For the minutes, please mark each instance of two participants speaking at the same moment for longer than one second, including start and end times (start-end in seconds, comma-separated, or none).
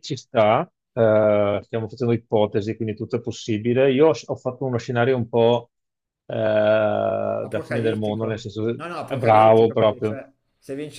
7.5-10.2